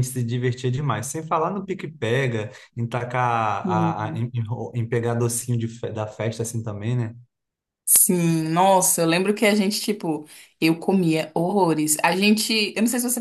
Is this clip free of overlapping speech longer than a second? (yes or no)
yes